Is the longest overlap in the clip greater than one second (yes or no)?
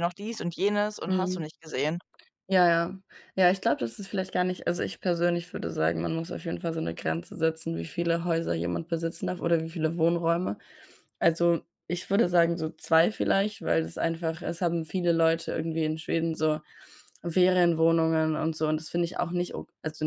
no